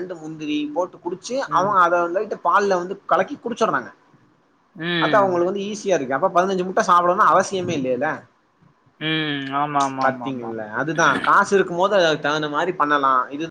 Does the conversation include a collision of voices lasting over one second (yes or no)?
no